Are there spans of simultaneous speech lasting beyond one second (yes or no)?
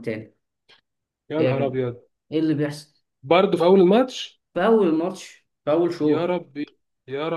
no